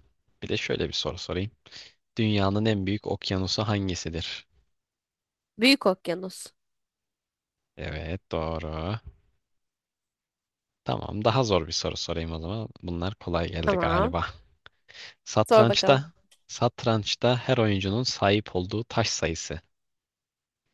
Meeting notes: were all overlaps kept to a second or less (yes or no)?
yes